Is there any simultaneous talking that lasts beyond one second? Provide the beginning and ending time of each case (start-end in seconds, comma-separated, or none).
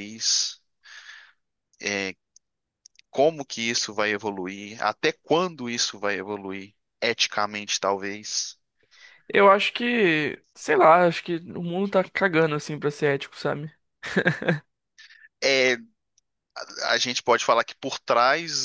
none